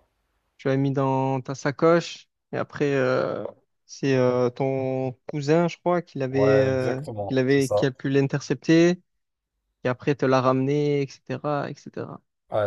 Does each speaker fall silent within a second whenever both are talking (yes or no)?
no